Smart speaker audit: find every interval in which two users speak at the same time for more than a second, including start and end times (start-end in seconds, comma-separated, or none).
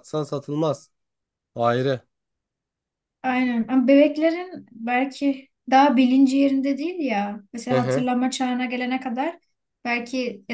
none